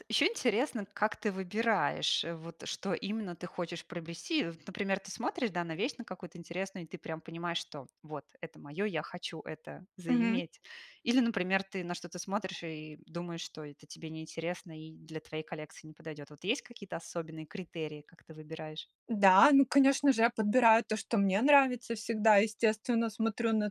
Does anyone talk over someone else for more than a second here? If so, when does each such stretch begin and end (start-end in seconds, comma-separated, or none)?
none